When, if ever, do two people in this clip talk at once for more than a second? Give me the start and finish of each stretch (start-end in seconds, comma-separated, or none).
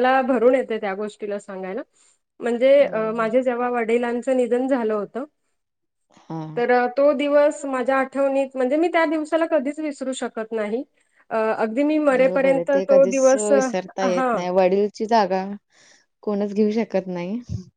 12.2-14.3